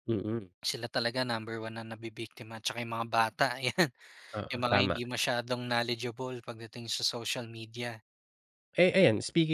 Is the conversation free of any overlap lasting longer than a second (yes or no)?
yes